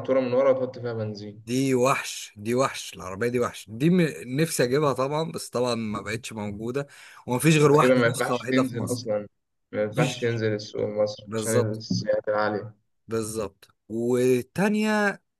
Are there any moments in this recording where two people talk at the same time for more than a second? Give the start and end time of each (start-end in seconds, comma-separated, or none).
7.7-9.1